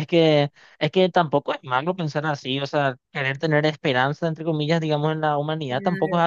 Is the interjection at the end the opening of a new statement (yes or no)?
no